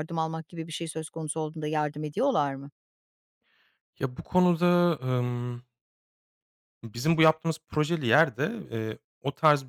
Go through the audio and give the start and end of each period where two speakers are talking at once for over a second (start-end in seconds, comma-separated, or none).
none